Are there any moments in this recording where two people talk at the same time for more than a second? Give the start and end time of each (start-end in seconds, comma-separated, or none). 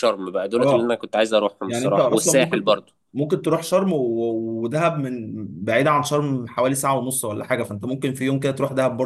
1.7-2.9